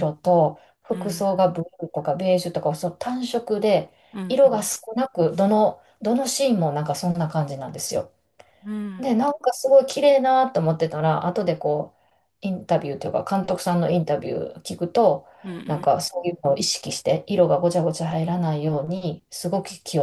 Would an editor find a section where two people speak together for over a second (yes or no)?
no